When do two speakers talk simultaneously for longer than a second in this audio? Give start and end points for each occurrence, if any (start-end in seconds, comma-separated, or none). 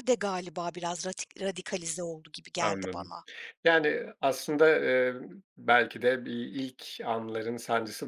none